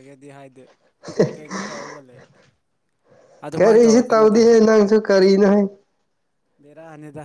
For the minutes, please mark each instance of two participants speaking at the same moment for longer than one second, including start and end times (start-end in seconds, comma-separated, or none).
none